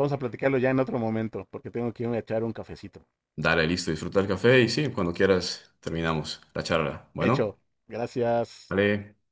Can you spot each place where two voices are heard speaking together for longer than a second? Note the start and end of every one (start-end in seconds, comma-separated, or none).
none